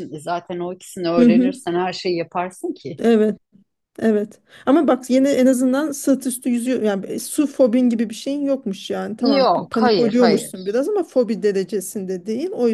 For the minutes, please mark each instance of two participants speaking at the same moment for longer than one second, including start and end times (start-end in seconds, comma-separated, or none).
9.2-10.8